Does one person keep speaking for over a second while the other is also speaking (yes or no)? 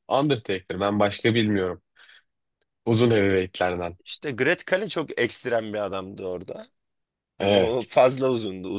no